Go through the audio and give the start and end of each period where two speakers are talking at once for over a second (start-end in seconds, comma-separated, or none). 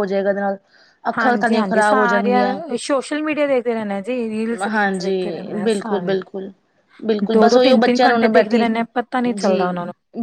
1.2-2.6